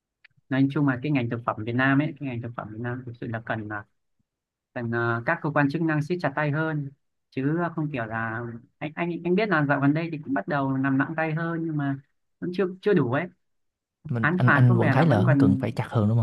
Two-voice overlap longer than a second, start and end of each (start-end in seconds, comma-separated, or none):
14.2-15.7